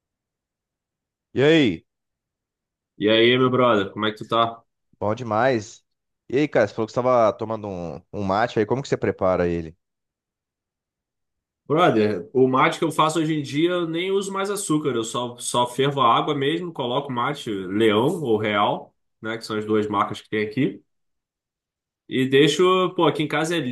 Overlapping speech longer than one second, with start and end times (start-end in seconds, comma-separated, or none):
none